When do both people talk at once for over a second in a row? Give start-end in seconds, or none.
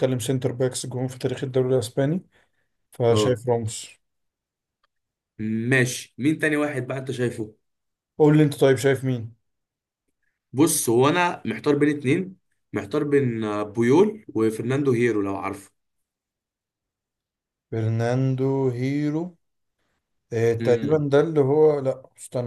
none